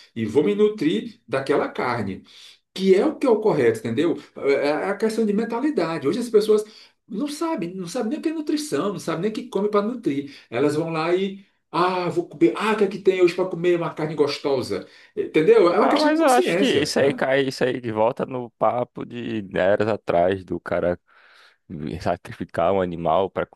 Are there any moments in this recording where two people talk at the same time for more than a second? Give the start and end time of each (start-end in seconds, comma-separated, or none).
15.8-17.2